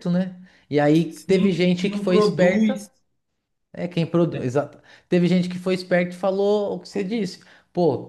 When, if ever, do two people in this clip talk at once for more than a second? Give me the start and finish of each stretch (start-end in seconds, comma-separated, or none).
1.1-2.8